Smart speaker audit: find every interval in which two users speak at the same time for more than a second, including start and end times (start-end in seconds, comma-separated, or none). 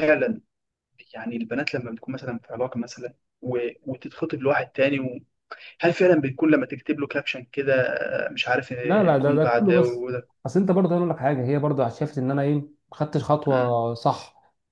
8.8-10.1